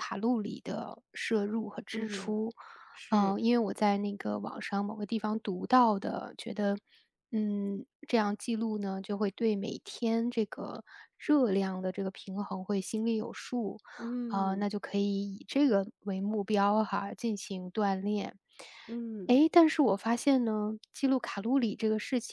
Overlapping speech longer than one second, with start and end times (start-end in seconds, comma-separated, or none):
none